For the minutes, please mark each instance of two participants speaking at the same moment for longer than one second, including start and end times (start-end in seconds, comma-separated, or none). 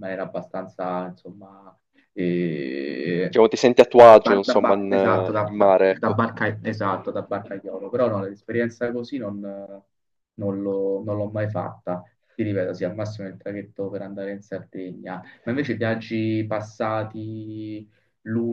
4.2-6.2